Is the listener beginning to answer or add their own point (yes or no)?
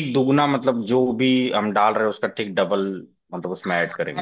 yes